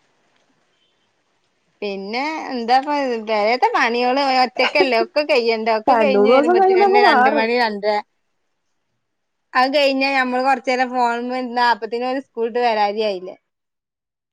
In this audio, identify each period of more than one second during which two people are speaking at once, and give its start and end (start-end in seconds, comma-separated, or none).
5.9-7.5